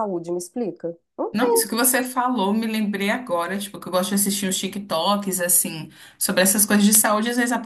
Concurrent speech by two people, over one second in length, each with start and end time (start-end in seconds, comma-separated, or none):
none